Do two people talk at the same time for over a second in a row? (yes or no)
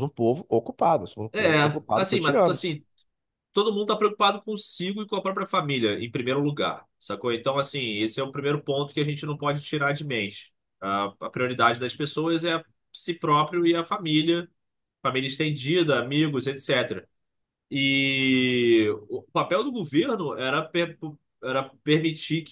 yes